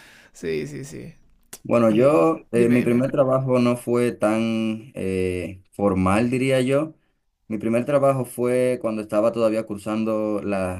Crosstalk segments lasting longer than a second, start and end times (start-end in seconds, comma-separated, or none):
1.9-3.0